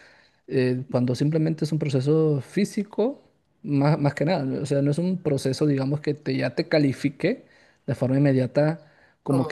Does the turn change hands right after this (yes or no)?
no